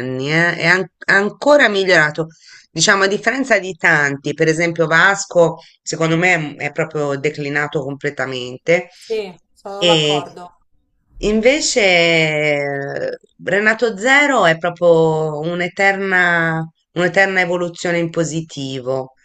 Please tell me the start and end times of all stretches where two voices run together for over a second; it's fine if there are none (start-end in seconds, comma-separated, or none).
none